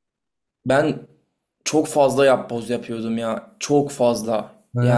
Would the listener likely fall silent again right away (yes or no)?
yes